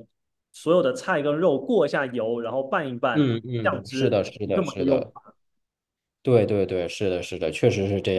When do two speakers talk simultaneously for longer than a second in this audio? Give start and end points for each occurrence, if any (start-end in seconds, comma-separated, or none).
3.1-5.1